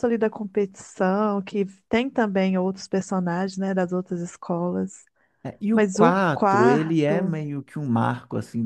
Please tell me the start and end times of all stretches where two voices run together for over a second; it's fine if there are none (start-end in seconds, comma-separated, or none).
5.7-7.4